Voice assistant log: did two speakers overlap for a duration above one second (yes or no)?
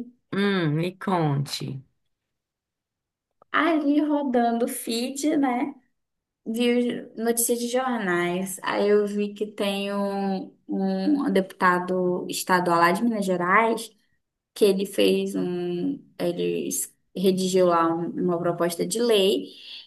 no